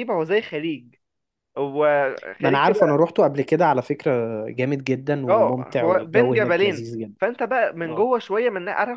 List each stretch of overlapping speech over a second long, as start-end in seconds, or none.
5.3-7.1